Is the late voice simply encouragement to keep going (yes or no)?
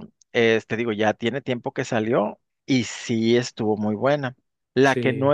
yes